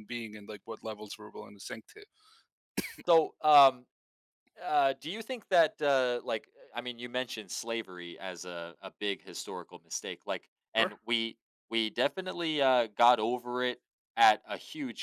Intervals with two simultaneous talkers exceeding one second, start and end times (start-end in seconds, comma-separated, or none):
none